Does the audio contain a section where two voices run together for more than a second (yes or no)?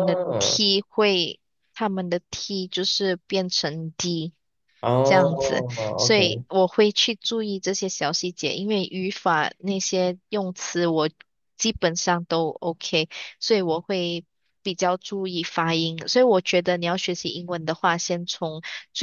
yes